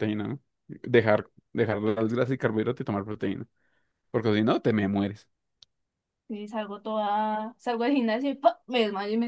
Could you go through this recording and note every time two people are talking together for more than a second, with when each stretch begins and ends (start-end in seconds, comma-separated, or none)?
none